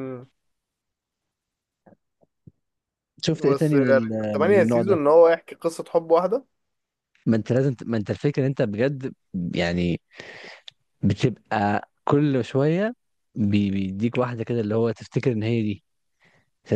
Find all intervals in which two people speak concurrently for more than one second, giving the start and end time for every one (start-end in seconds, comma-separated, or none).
3.3-5.0